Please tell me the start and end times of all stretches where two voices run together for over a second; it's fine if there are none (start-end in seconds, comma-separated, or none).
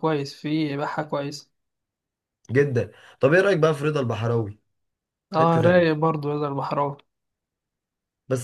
none